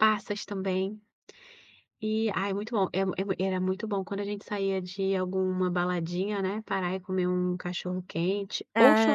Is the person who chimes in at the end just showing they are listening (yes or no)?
no